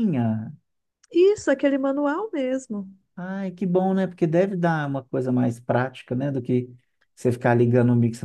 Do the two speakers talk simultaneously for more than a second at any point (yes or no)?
no